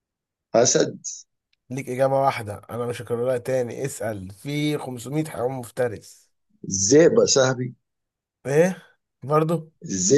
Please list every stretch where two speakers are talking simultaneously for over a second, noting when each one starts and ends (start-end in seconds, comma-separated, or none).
none